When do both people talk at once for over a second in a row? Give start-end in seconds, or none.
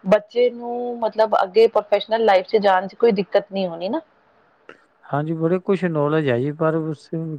none